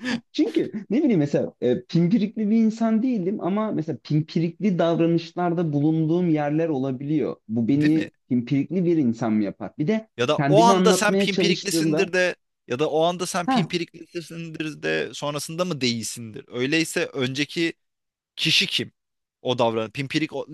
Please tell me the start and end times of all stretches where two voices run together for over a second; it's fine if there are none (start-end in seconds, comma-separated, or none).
10.2-12.1